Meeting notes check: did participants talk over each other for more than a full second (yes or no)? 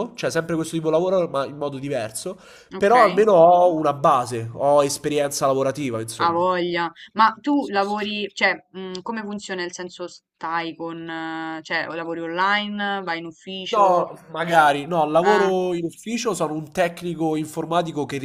no